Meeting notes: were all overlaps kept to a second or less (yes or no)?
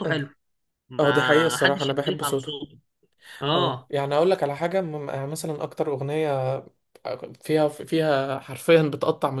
no